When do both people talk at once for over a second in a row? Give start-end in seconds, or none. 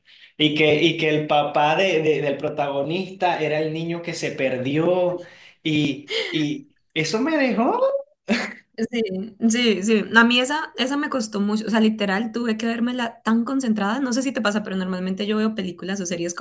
none